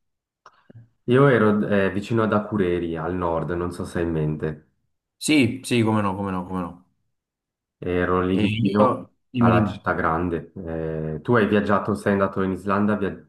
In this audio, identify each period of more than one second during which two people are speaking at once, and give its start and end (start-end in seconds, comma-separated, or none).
8.3-9.8